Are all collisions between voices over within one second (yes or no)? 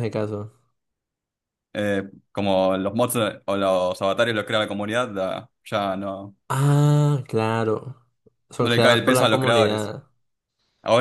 no